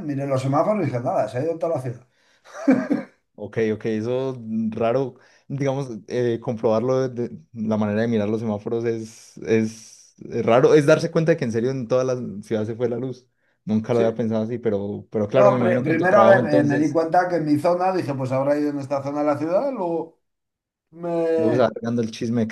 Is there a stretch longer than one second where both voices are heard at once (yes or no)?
yes